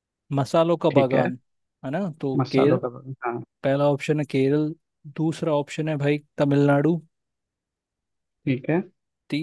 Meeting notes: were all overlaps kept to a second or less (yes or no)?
yes